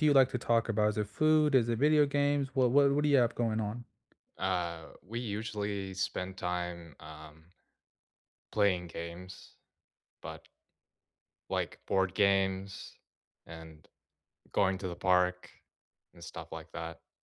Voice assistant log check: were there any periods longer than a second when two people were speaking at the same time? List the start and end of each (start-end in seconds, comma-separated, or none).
none